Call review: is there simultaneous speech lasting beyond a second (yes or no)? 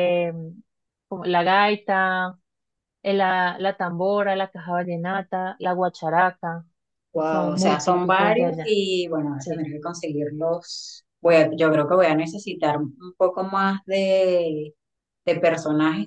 yes